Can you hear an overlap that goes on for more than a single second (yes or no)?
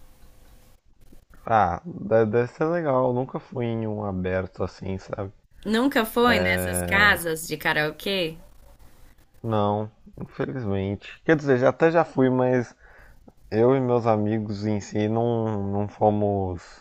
no